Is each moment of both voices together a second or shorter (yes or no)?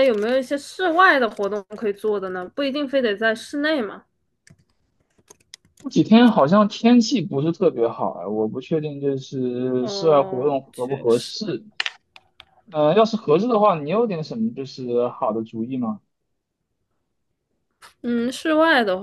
no